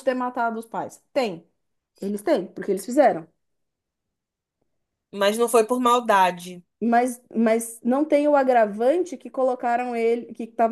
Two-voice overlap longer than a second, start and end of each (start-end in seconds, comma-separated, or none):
none